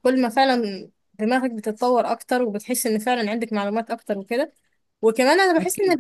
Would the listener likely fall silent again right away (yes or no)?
yes